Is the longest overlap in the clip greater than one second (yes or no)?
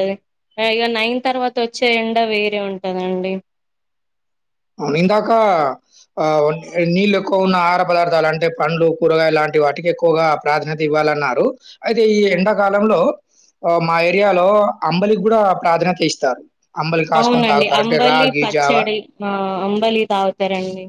yes